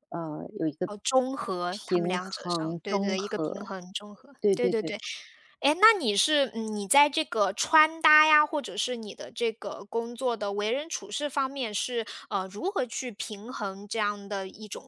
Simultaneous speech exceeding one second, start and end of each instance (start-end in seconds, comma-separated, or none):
1.7-3.7